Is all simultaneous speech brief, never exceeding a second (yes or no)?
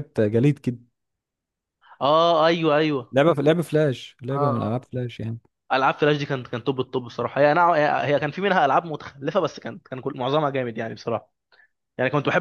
yes